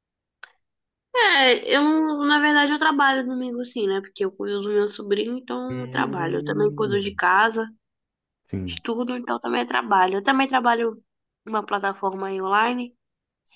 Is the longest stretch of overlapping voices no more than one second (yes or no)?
no